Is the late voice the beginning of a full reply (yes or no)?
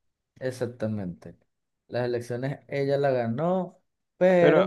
yes